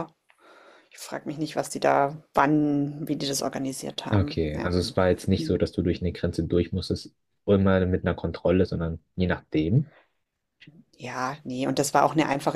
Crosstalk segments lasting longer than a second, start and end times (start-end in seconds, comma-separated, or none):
none